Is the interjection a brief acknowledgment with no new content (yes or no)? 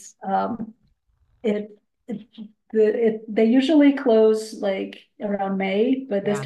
yes